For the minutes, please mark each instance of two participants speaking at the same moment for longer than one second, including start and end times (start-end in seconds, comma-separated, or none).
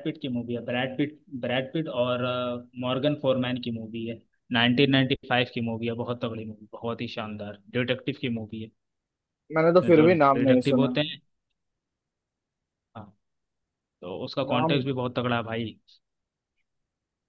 9.6-11.0